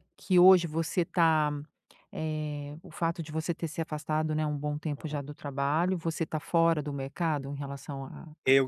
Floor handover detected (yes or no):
yes